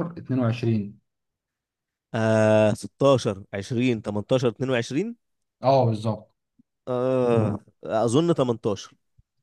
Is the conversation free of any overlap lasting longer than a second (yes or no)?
yes